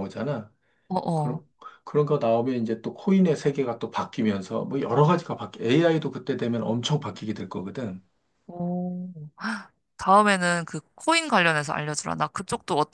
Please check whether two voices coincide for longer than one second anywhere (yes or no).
no